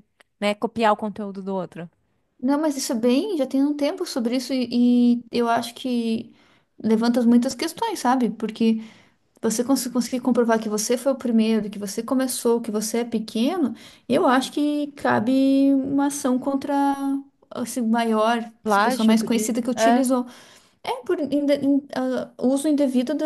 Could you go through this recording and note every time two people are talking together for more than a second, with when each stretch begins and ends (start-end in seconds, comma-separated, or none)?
18.6-20.1